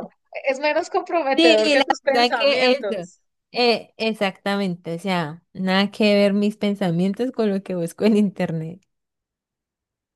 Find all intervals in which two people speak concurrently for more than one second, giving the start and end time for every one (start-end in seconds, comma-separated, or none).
1.4-3.1